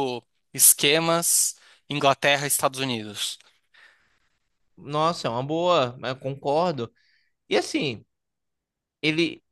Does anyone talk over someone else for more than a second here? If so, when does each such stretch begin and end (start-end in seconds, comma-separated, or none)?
none